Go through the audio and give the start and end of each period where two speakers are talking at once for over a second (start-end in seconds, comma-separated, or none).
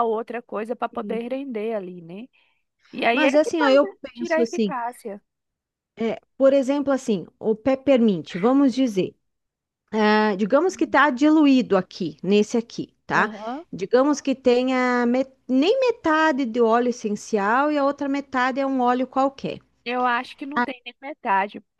3.1-4.7